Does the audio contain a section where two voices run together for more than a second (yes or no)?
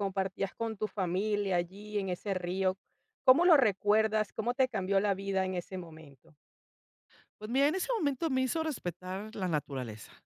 no